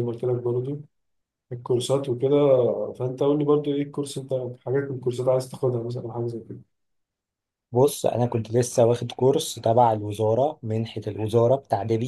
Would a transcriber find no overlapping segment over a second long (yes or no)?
yes